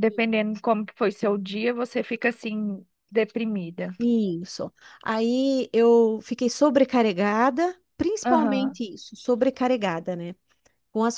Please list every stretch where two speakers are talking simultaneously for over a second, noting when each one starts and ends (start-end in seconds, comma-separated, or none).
none